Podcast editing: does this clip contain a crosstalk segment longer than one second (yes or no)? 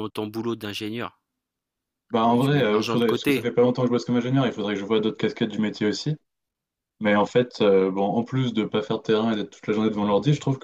yes